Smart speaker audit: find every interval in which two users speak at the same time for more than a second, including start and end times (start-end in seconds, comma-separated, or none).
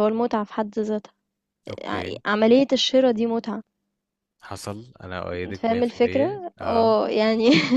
5.5-7.0